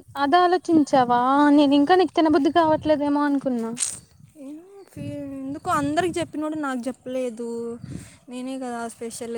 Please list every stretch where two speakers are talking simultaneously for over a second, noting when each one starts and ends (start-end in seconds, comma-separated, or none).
none